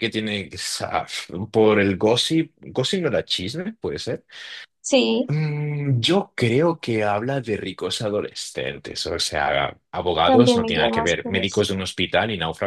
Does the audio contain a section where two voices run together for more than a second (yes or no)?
yes